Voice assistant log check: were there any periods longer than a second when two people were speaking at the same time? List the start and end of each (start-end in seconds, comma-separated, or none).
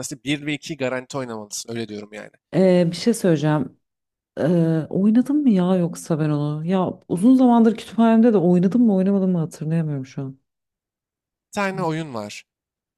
none